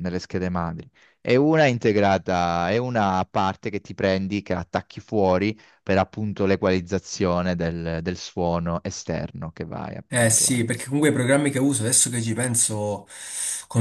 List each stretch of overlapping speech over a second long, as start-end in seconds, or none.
none